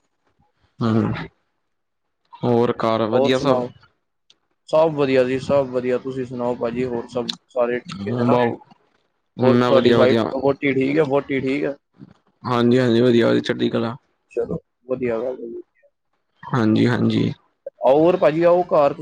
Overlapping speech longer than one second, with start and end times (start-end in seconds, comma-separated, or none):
none